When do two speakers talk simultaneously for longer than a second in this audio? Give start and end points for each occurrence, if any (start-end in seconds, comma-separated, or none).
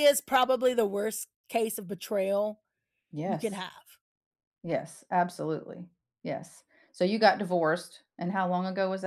none